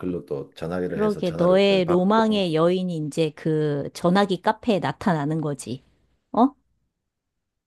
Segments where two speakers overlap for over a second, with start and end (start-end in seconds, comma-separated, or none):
0.9-2.4